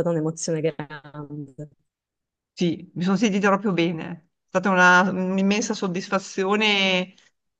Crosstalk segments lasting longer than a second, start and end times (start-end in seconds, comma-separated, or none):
none